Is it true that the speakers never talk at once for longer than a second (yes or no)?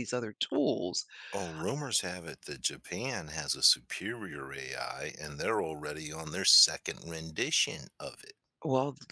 yes